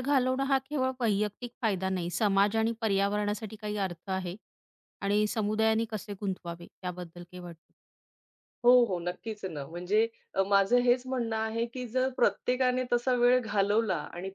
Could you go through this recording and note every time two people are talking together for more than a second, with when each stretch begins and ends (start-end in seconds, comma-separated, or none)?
none